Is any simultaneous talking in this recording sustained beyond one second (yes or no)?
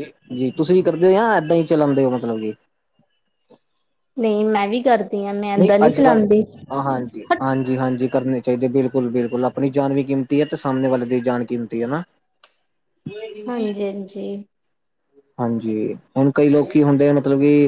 no